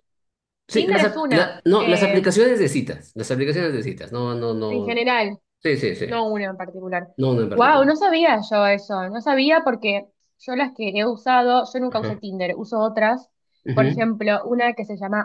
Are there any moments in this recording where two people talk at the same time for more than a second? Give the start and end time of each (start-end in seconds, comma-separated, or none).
0.7-2.2